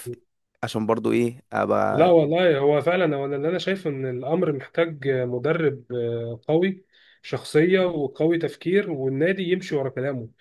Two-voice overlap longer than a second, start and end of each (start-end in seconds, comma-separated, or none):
none